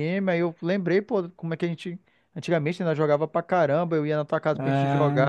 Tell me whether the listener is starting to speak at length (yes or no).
no